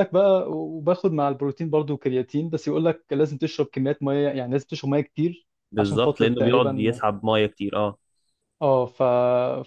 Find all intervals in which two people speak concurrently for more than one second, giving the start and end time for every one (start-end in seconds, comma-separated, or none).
5.7-7.0